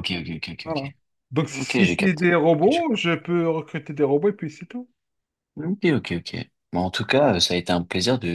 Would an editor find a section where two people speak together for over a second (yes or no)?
yes